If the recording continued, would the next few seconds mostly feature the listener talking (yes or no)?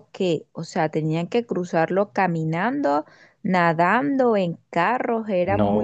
yes